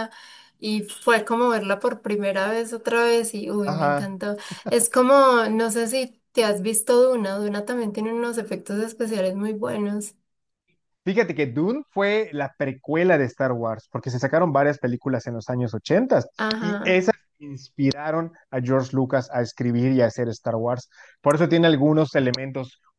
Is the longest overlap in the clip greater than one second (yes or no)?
no